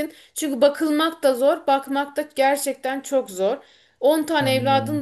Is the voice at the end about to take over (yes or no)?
no